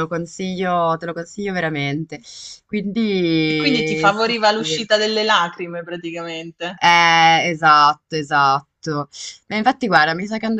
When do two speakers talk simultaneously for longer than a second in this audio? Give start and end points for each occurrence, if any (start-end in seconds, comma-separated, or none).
3.5-4.8